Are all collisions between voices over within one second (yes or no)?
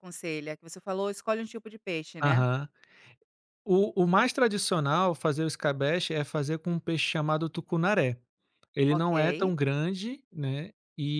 yes